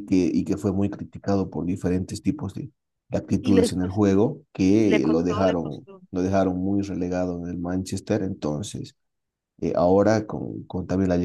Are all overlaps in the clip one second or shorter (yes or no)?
no